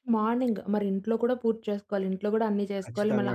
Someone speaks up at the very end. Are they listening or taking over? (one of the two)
listening